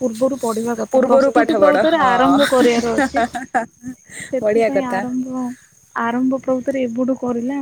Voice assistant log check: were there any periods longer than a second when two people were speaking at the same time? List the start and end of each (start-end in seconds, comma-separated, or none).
0.9-2.6